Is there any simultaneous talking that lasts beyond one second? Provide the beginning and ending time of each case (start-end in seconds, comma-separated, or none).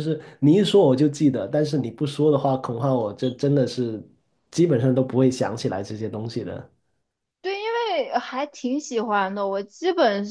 none